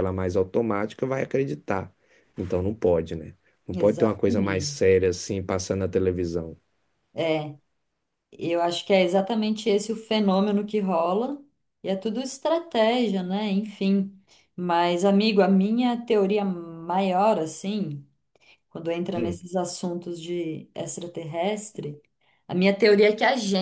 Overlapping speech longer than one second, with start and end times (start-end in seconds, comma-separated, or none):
3.7-5.0